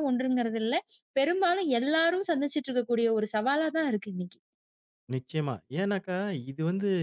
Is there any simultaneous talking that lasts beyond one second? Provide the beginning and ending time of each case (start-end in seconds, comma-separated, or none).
none